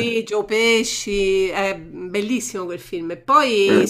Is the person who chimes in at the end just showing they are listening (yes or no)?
yes